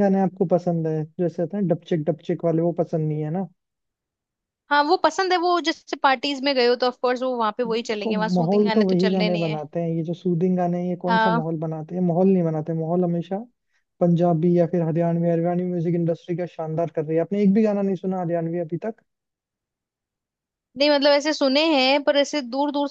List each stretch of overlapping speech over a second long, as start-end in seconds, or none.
7.7-9.6